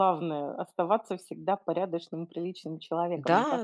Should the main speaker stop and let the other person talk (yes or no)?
yes